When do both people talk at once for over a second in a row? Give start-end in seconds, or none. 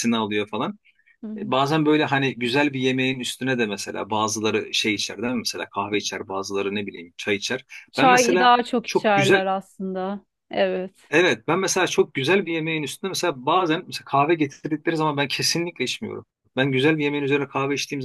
7.9-9.5